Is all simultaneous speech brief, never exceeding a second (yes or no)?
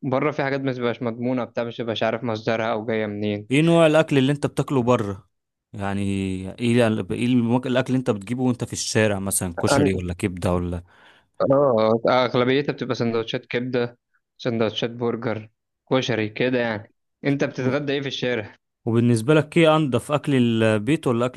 yes